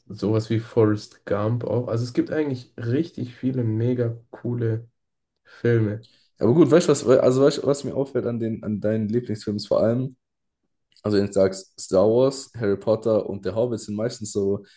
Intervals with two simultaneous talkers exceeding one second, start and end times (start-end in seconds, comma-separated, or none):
none